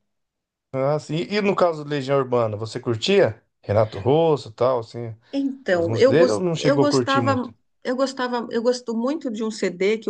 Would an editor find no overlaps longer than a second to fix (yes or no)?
no